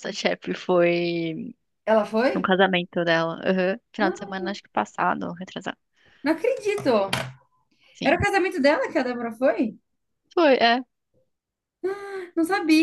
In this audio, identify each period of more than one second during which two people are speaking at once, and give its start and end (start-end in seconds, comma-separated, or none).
none